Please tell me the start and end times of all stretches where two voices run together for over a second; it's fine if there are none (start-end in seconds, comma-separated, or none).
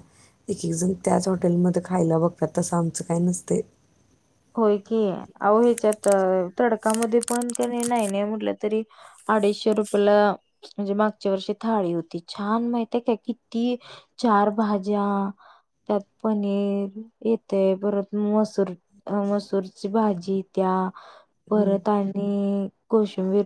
none